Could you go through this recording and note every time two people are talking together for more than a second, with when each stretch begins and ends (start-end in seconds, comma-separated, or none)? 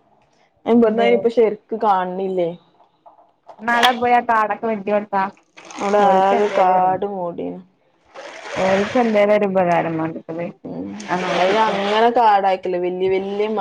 none